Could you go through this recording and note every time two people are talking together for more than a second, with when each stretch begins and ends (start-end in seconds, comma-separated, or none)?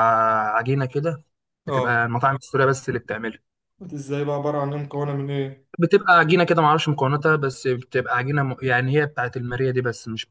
none